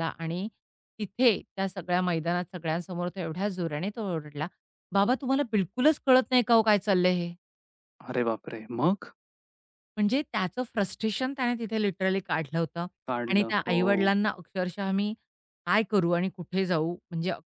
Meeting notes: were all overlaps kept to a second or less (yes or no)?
yes